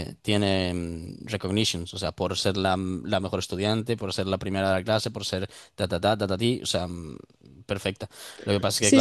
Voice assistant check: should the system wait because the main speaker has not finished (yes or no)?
no